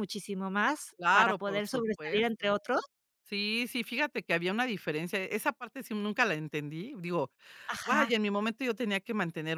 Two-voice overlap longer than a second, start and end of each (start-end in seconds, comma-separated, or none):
1.0-2.5